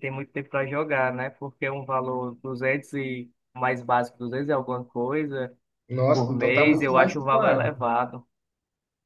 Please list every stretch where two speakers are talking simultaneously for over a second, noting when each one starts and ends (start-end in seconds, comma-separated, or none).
6.1-7.8